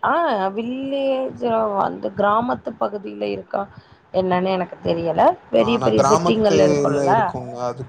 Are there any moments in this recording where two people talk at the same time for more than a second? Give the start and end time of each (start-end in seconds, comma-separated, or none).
5.6-7.1